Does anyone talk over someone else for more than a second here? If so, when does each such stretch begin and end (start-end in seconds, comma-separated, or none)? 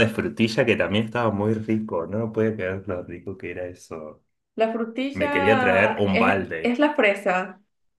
5.1-6.8